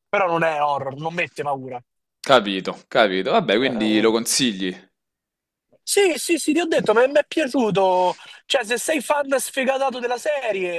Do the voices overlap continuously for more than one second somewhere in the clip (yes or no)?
no